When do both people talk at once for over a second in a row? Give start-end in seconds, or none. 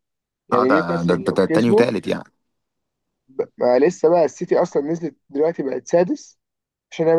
0.5-1.9